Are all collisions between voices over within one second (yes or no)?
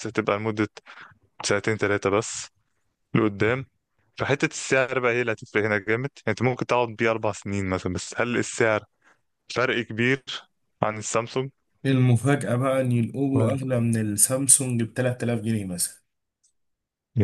yes